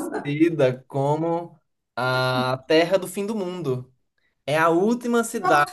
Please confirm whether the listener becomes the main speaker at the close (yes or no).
no